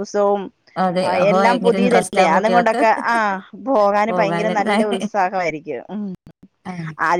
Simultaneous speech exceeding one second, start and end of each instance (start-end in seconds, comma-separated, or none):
1.1-2.8